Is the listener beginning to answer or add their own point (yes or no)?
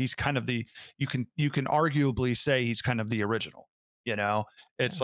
no